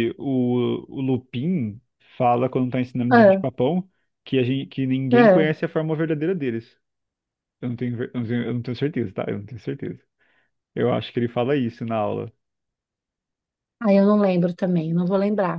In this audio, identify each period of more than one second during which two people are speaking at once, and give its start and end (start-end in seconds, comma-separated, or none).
none